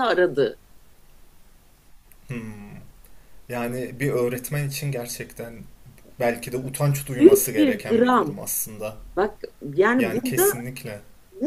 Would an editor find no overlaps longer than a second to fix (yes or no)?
no